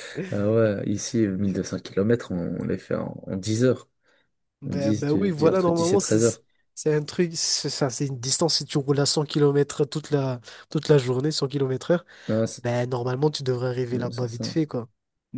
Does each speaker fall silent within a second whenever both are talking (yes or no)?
no